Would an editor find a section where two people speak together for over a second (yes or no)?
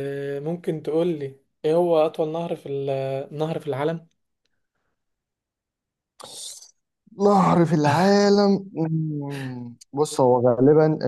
no